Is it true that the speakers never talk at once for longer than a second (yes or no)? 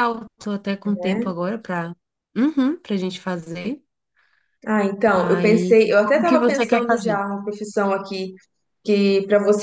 no